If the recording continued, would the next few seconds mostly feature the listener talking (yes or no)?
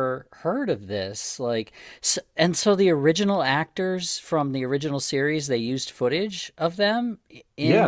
yes